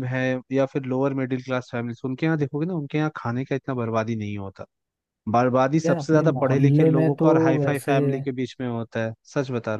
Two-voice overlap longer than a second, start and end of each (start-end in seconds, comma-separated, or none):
5.8-7.9